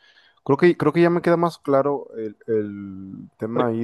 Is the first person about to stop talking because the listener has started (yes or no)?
no